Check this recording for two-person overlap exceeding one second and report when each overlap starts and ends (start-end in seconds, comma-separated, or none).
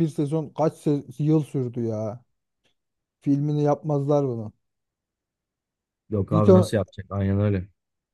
none